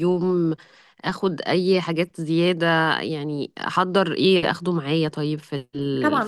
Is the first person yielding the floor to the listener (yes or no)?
yes